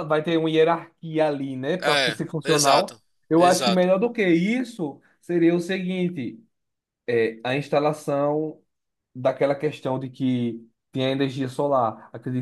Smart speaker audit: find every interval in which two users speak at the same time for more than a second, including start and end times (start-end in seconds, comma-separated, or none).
1.8-3.9